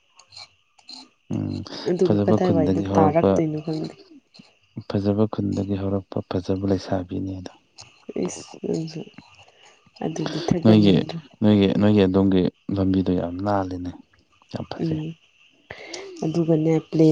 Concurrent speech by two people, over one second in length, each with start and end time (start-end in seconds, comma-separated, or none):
2.0-3.3